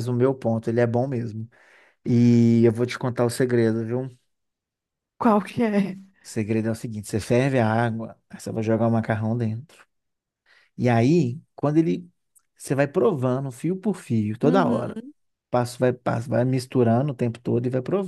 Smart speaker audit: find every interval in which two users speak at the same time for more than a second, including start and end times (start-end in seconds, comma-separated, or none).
none